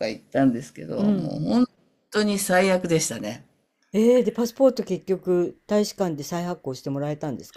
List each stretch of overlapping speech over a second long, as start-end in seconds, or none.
none